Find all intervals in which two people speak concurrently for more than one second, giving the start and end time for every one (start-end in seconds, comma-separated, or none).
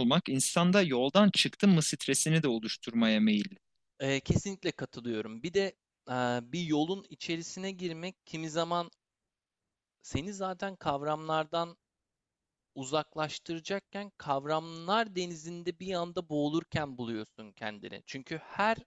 none